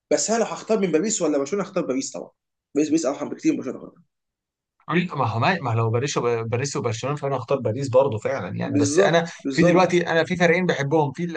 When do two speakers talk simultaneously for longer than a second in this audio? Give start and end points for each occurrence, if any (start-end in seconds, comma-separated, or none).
8.6-10.1